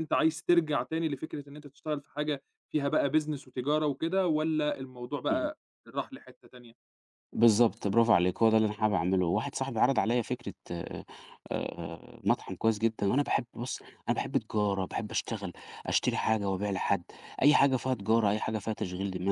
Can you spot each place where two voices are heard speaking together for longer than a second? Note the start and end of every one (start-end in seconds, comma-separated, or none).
none